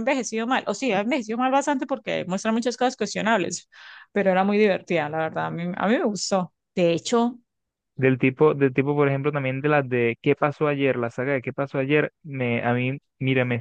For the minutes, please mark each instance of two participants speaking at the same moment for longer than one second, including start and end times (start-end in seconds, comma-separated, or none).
none